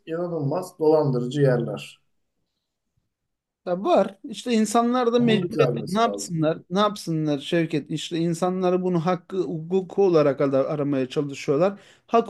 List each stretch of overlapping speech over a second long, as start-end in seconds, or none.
5.2-6.5